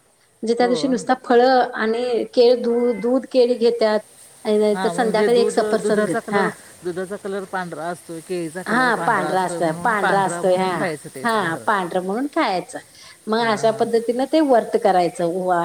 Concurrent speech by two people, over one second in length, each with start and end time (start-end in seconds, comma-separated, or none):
4.7-6.5